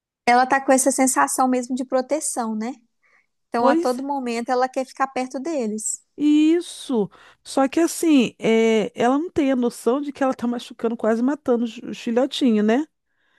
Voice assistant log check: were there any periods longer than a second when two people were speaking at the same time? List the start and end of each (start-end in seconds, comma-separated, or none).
none